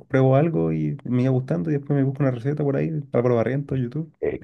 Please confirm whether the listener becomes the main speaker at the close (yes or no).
yes